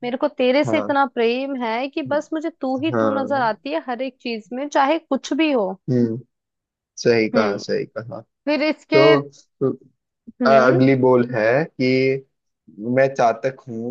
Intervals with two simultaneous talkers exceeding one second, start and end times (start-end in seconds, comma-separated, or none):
none